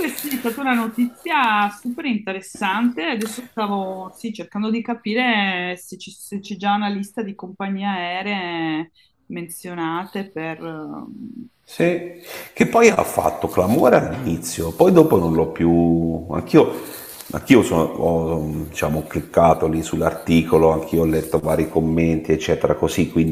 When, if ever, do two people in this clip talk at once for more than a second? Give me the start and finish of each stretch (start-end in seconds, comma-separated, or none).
none